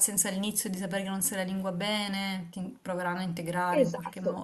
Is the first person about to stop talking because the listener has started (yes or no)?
yes